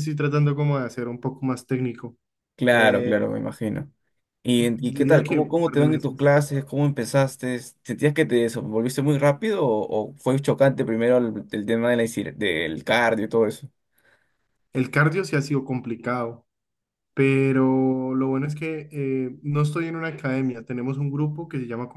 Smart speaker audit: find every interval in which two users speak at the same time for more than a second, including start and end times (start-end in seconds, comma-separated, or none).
4.8-6.3